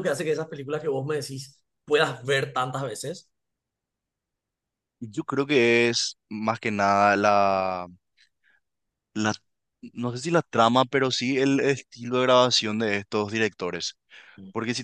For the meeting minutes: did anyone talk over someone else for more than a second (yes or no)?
no